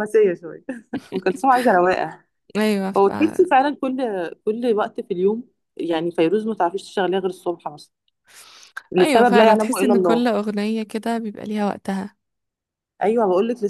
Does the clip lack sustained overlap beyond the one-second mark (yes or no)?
no